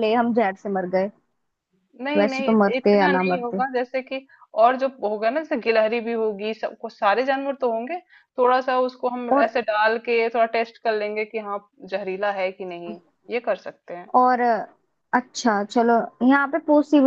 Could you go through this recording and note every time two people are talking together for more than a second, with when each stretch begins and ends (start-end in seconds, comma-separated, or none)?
2.2-3.6